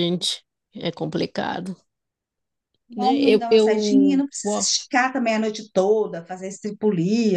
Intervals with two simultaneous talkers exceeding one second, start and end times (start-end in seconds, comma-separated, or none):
3.0-4.7